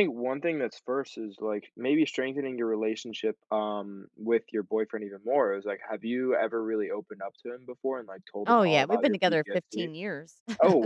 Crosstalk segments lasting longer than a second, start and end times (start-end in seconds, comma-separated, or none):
8.5-9.9